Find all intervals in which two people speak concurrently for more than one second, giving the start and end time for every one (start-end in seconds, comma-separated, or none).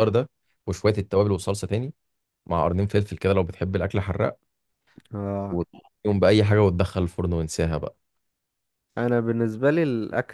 none